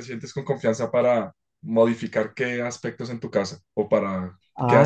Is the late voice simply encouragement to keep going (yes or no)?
no